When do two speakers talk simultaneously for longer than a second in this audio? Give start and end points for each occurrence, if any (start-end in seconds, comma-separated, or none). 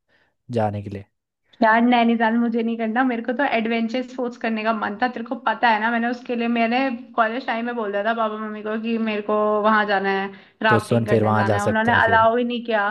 10.7-12.3